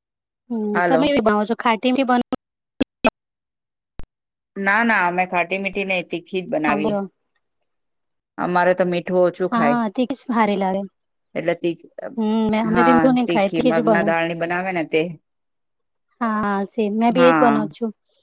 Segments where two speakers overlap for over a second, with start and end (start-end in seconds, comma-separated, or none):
12.0-14.2